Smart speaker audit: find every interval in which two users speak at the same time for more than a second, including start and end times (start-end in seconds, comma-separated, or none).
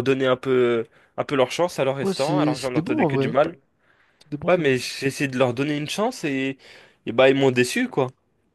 2.0-3.4